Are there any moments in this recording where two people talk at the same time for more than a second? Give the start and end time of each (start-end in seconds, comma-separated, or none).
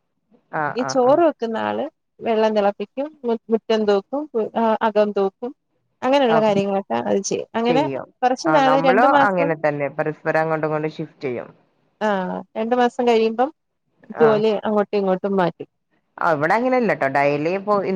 none